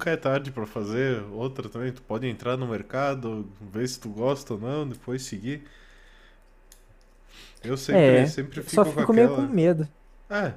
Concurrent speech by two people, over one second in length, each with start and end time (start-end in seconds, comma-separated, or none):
7.9-9.5